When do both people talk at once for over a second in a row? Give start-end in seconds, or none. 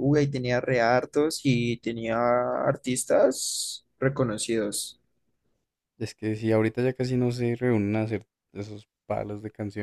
none